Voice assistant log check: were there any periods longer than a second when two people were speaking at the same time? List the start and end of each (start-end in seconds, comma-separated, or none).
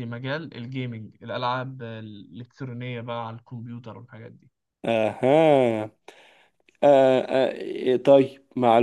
none